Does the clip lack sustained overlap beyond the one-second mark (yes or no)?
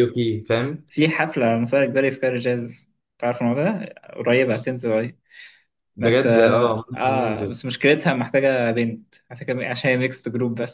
no